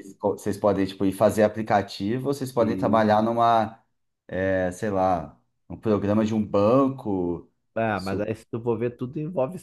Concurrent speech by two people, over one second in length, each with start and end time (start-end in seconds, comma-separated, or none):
none